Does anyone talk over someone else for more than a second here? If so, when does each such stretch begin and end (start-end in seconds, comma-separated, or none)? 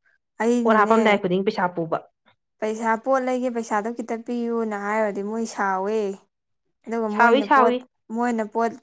none